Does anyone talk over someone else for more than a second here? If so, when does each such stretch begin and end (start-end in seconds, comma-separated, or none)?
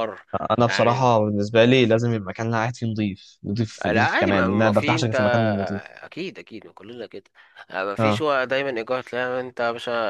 3.8-5.1